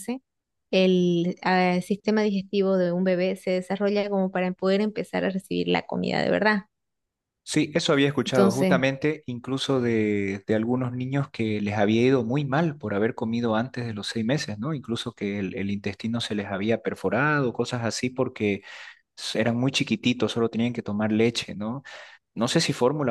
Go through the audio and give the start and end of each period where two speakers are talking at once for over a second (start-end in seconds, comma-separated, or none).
none